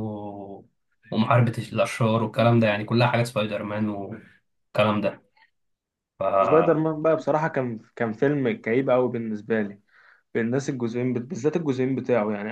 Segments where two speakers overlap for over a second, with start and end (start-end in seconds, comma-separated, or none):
none